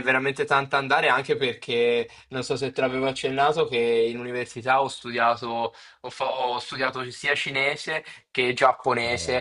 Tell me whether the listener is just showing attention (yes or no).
yes